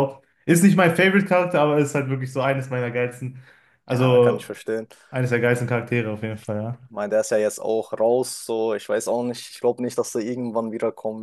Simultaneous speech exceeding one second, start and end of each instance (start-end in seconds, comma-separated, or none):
none